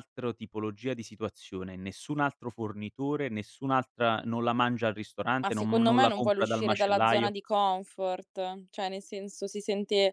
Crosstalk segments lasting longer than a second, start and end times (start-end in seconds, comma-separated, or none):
5.4-7.3